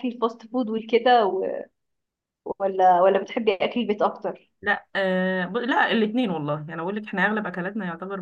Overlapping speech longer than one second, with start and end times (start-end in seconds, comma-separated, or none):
none